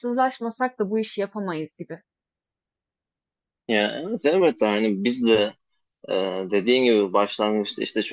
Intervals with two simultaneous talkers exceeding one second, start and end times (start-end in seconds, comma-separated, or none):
none